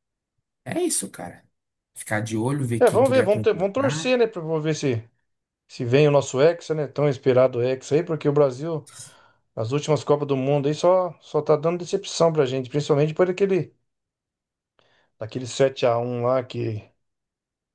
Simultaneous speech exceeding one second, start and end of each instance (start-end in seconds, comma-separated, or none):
2.8-4.1